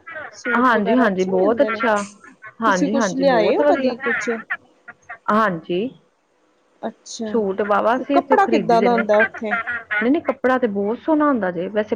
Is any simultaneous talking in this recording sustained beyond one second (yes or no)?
yes